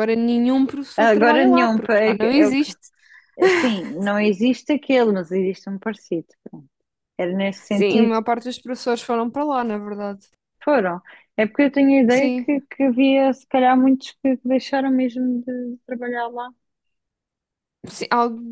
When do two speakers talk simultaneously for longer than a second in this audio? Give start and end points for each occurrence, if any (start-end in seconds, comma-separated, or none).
1.0-2.7